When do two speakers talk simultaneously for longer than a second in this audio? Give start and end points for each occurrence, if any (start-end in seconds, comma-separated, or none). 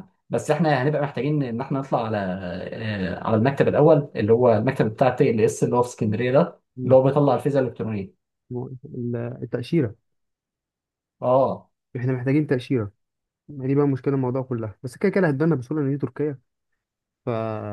none